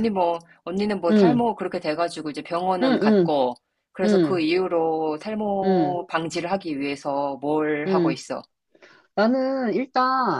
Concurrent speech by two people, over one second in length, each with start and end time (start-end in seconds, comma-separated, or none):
none